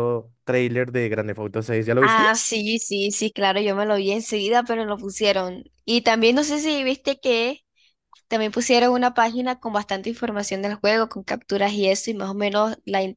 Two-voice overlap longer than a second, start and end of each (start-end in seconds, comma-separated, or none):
none